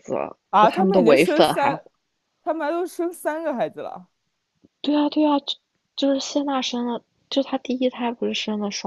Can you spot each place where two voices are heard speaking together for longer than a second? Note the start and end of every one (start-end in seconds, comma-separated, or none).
0.5-1.7